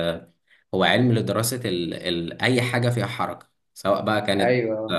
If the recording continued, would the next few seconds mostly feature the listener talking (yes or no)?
no